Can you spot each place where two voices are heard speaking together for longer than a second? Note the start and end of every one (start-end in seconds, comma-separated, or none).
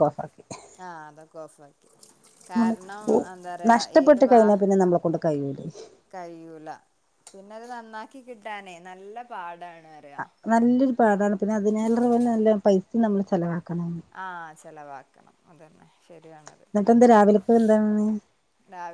none